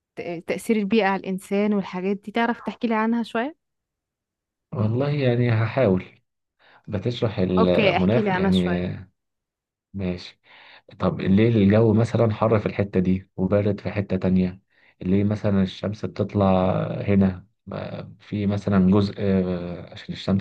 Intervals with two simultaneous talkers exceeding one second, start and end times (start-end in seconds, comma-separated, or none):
7.6-8.8